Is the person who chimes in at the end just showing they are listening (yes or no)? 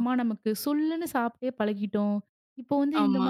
yes